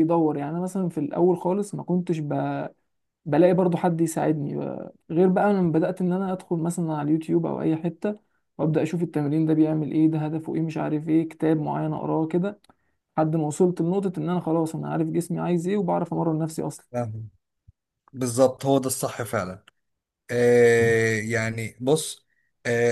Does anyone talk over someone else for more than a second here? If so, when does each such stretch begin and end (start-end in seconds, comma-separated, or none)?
none